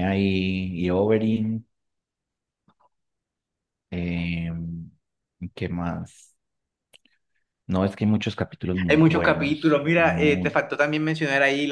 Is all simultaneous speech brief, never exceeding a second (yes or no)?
no